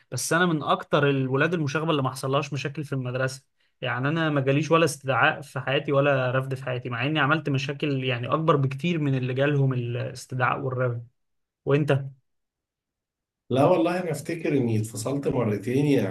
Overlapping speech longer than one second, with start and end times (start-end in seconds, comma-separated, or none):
none